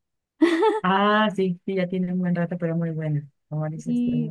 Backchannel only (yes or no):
no